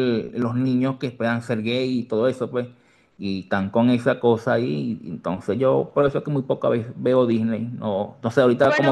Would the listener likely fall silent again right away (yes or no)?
no